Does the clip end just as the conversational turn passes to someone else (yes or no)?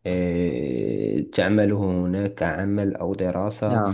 no